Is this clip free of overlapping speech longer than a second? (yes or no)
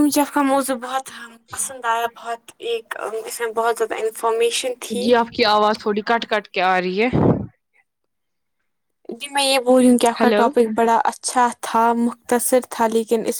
yes